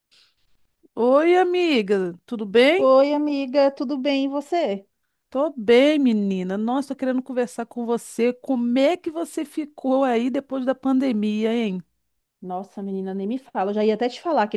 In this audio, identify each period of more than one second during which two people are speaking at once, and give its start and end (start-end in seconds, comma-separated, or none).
none